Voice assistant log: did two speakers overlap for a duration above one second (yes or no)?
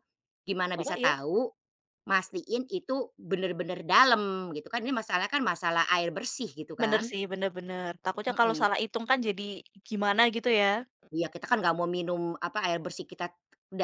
no